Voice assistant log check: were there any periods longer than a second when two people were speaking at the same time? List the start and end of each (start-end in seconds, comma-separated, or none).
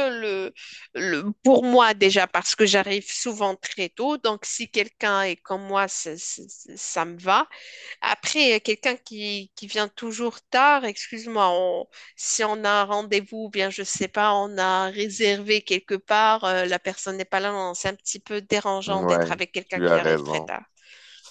18.9-20.5